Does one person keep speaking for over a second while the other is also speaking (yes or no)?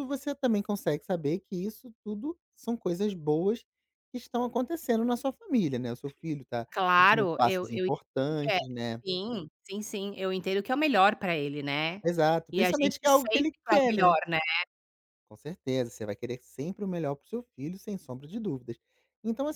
yes